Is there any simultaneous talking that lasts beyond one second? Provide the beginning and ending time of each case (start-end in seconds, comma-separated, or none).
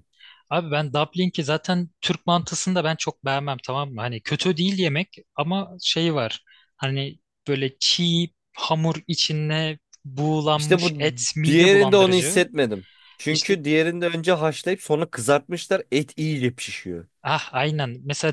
10.5-12.4